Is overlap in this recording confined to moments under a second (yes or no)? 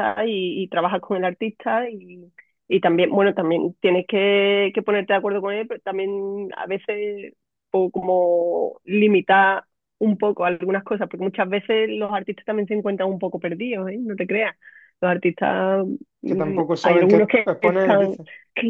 no